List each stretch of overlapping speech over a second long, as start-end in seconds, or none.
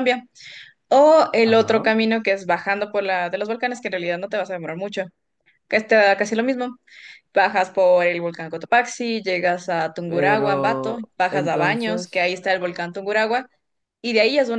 10.1-12.2